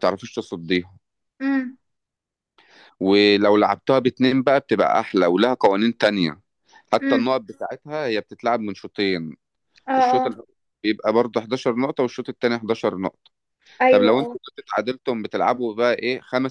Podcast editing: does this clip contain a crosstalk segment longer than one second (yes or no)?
no